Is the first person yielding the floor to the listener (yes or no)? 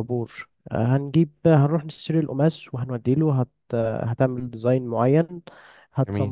no